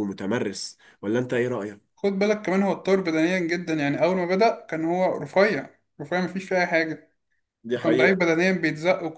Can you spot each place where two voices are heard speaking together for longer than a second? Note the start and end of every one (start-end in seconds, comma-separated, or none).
none